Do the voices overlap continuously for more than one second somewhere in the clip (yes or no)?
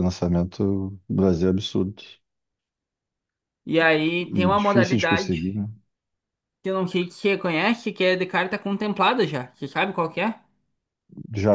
yes